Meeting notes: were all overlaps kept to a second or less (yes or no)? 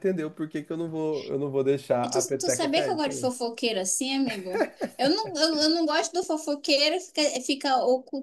no